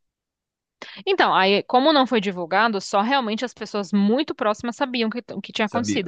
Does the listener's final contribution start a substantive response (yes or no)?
no